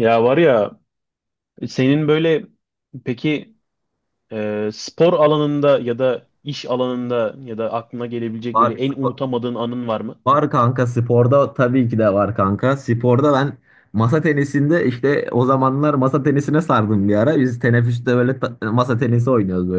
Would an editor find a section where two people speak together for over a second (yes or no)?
no